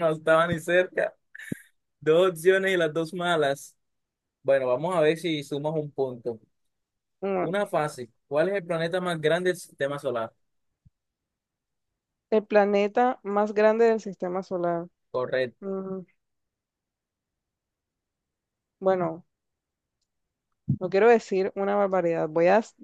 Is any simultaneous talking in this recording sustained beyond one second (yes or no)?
no